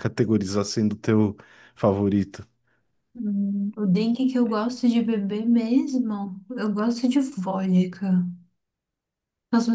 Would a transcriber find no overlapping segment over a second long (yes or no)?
yes